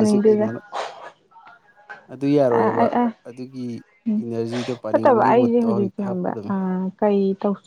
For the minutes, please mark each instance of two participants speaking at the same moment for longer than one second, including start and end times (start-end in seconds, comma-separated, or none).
4.9-6.3